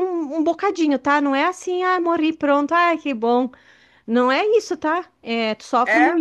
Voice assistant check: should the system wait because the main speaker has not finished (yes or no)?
yes